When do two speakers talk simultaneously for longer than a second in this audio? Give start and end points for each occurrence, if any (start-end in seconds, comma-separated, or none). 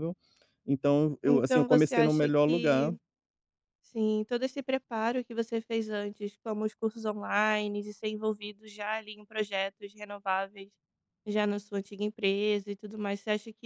1.3-2.9